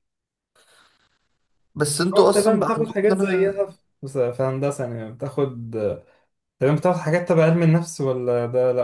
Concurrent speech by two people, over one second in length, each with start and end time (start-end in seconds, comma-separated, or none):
2.1-3.6